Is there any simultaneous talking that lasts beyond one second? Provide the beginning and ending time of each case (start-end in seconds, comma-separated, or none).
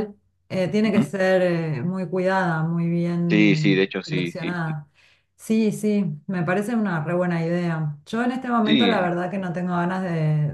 3.3-4.8